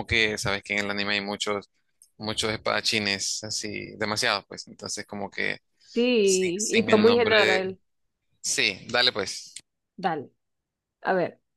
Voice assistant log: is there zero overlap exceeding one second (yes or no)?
no